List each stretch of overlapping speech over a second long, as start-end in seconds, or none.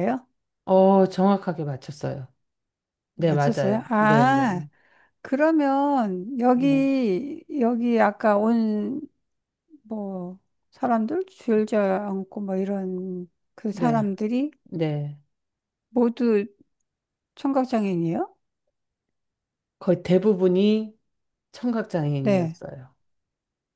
3.2-4.5